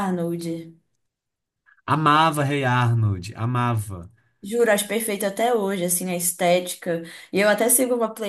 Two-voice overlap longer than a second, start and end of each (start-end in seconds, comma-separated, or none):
none